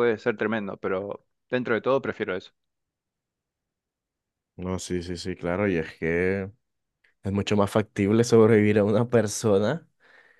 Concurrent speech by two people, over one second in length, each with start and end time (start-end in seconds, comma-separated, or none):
none